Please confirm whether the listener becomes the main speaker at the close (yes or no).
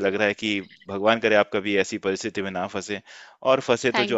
no